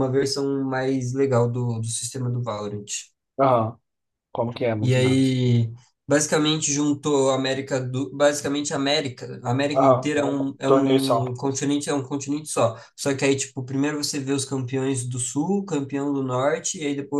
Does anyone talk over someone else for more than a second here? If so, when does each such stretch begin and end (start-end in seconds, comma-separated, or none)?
9.8-11.2